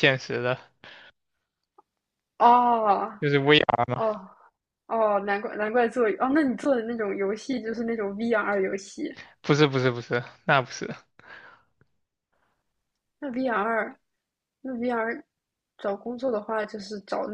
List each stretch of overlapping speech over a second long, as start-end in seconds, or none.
none